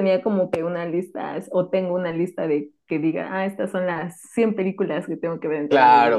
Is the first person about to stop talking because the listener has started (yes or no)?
yes